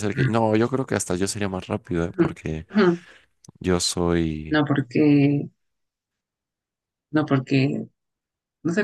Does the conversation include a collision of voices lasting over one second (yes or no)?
no